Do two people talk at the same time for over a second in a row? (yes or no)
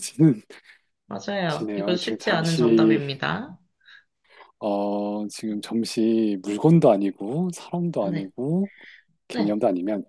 yes